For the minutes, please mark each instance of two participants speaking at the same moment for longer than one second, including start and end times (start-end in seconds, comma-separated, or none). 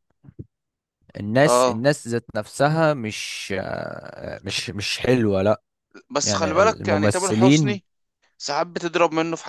6.2-7.8